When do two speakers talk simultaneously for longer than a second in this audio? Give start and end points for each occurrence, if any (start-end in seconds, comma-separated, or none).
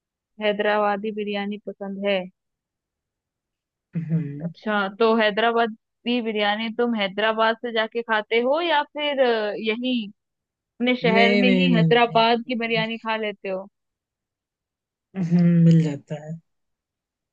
11.0-12.8